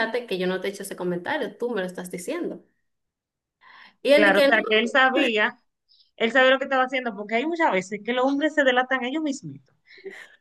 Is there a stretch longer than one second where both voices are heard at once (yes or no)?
no